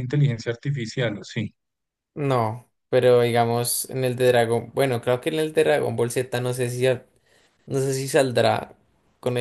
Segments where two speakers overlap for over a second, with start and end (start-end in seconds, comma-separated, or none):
none